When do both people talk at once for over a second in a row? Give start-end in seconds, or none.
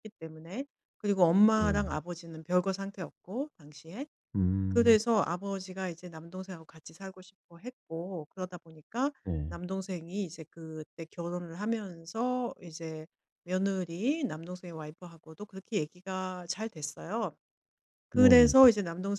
none